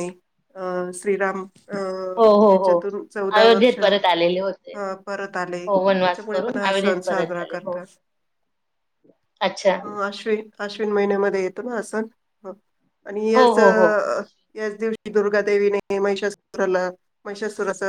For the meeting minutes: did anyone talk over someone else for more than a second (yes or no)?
yes